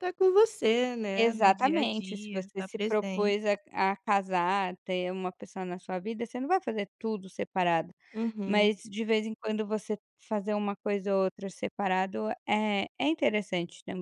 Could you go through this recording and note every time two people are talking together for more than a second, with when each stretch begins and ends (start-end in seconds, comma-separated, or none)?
1.1-3.4